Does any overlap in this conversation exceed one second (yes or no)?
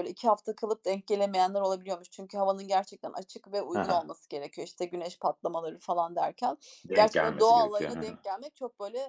yes